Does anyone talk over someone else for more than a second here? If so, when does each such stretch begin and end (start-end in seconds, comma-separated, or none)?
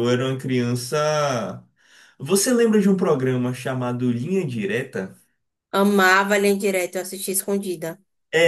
none